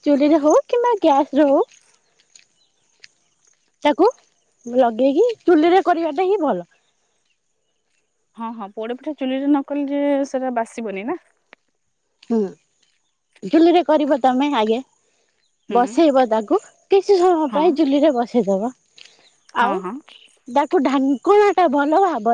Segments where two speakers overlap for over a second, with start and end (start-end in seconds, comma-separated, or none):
none